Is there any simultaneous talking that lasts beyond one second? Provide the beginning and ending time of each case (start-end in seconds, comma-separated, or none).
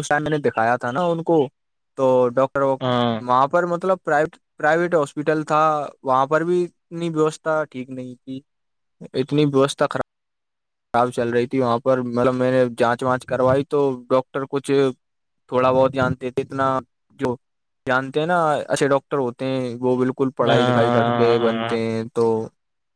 20.5-21.8